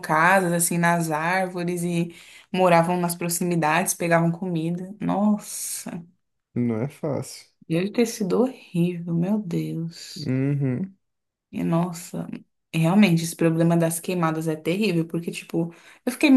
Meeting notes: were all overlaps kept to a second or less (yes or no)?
yes